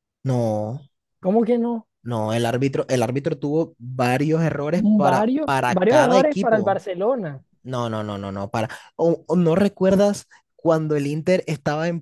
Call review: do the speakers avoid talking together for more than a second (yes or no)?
no